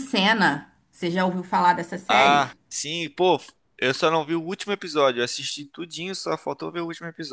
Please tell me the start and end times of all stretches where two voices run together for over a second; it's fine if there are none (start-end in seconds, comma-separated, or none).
none